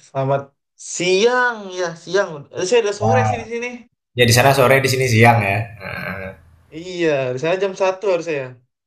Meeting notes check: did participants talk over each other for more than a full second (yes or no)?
no